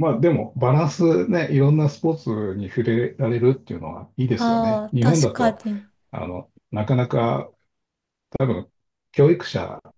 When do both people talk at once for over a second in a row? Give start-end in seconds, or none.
4.3-5.6